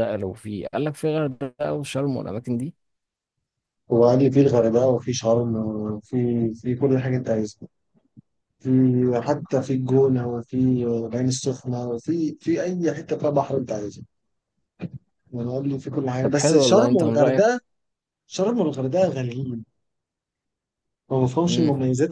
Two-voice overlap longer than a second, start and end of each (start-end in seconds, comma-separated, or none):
16.2-17.4